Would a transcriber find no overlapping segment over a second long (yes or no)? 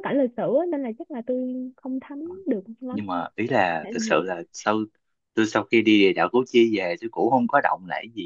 yes